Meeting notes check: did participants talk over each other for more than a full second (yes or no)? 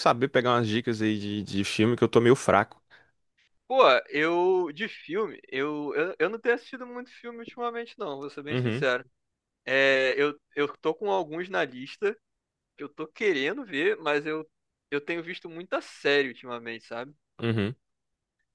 no